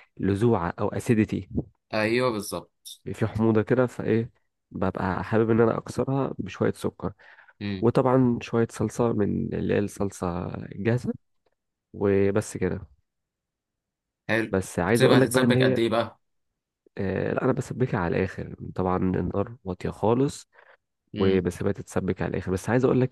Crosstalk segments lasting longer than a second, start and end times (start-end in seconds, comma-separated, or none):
14.5-15.8